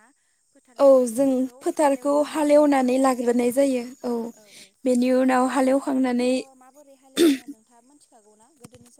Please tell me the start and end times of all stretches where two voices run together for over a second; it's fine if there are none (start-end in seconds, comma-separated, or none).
0.8-3.1